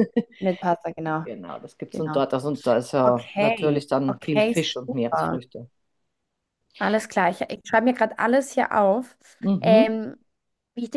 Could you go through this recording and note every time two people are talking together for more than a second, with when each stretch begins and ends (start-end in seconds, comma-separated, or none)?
3.0-5.4